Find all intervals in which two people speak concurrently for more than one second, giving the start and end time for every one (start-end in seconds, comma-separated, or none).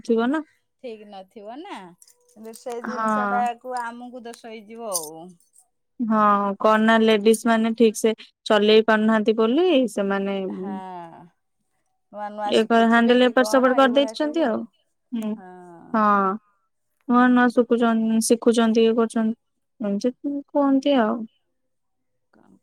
12.6-14.4